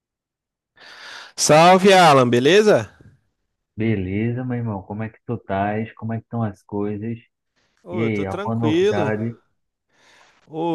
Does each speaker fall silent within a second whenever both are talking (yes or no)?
no